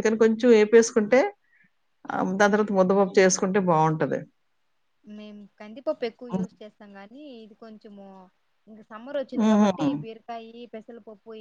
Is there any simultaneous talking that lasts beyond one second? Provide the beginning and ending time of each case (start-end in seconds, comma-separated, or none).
none